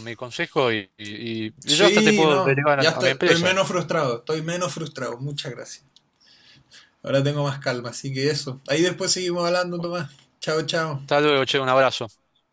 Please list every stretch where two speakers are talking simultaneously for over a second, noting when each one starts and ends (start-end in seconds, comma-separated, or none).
1.6-3.5